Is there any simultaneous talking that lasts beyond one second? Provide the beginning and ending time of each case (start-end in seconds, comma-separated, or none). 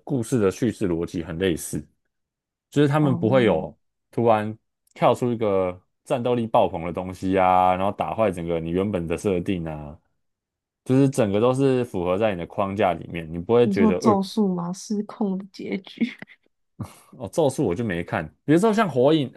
none